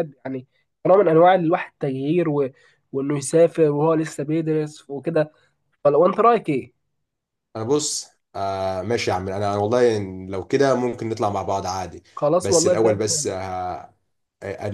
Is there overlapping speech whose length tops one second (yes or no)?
no